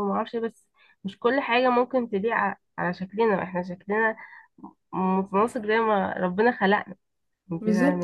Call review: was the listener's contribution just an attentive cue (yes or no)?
no